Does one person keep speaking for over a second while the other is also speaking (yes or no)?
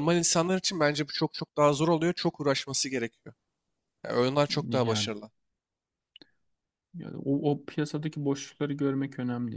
no